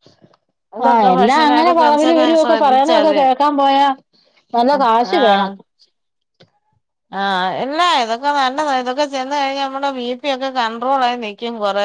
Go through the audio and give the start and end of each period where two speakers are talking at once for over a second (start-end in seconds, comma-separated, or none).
0.9-3.2